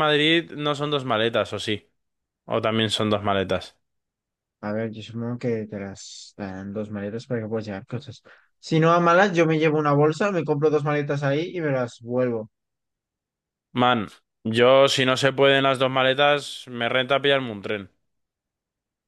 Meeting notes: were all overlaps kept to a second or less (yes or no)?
yes